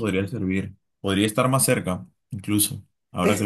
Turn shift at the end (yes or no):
yes